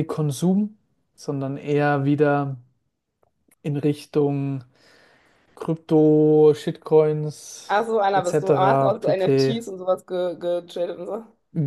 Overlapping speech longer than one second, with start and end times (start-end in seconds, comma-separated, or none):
7.7-9.6